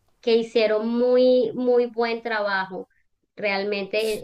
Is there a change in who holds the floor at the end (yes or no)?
no